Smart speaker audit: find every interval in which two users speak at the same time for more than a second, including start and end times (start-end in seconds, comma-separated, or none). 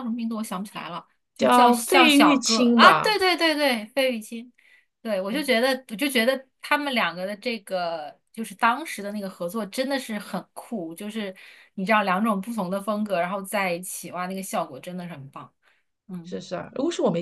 1.4-3.2